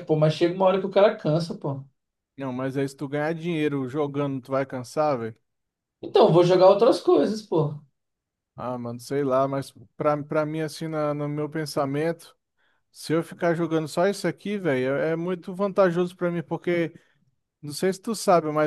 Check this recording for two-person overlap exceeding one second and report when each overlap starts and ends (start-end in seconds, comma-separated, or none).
none